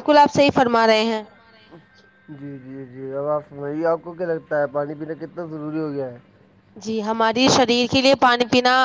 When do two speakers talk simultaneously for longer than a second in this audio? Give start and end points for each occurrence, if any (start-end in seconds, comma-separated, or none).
none